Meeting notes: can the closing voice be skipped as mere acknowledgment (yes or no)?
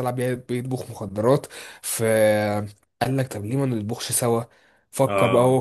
yes